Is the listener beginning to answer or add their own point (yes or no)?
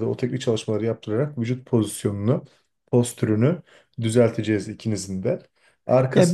yes